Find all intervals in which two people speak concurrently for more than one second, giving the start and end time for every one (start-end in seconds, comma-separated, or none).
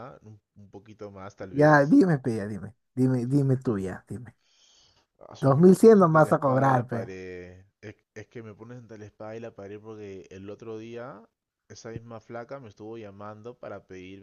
5.4-7.1